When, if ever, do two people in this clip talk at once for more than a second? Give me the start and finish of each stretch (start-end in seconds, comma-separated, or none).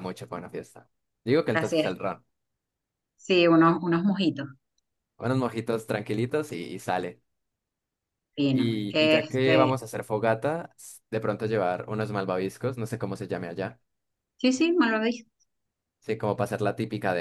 8.5-9.7